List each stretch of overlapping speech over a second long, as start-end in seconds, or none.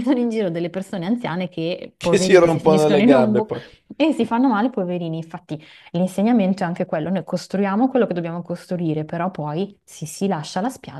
2.0-3.6